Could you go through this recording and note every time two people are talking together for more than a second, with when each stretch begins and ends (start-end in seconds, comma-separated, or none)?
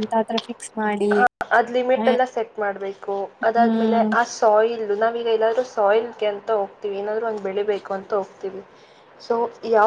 none